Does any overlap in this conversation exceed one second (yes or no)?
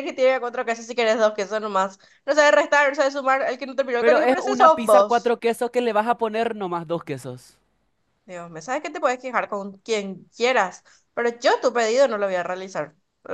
yes